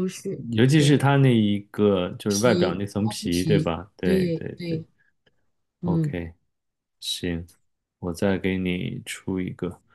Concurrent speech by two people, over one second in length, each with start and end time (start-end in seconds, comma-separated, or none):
2.3-4.8